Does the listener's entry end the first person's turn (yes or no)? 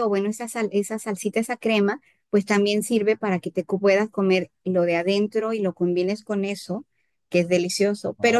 no